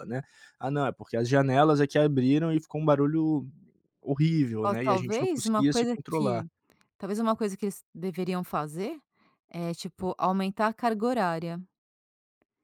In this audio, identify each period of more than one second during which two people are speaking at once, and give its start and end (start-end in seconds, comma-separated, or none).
4.6-6.5